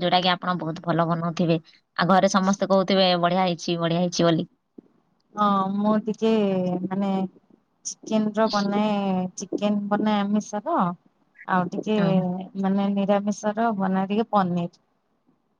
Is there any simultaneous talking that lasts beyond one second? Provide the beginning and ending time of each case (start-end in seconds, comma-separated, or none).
none